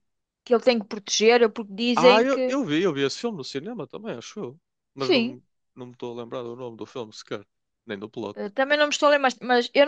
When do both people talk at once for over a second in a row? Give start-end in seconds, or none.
none